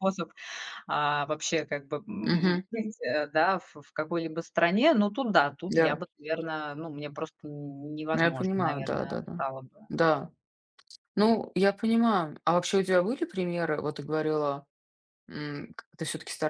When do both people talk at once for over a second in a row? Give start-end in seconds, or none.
8.1-9.4